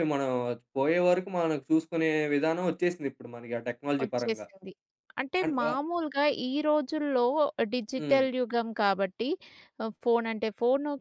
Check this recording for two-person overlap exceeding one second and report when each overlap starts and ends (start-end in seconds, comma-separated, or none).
none